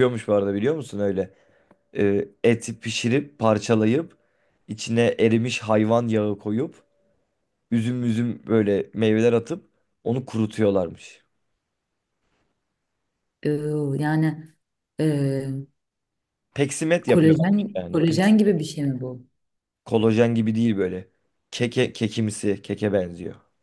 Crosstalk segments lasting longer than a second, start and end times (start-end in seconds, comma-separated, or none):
17.1-18.6